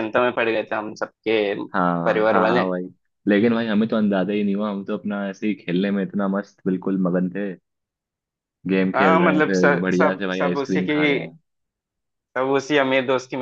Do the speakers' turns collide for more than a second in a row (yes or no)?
yes